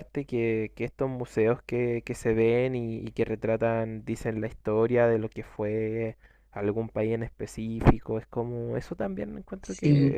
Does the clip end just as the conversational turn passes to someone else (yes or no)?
no